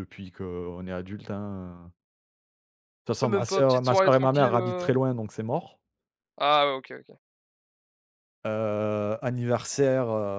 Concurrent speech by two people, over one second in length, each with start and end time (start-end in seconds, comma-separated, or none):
3.2-4.9